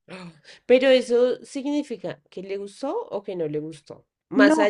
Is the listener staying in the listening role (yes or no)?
yes